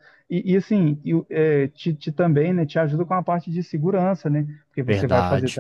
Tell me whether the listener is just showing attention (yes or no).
yes